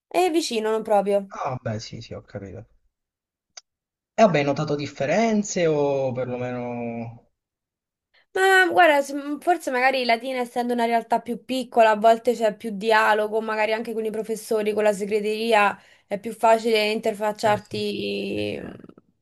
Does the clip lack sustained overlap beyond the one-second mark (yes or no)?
yes